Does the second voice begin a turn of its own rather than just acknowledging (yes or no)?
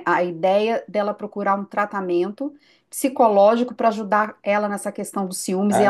yes